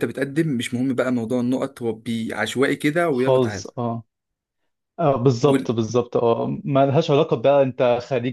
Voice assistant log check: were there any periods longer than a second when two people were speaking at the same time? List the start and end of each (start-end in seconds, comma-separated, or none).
none